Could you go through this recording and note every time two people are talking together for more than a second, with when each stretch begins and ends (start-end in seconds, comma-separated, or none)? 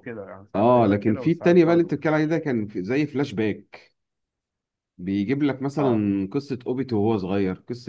0.5-2.3